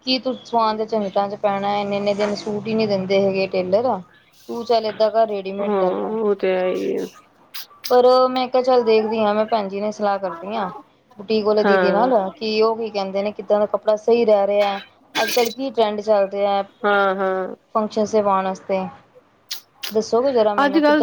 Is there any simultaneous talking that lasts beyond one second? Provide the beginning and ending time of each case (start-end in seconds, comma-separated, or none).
none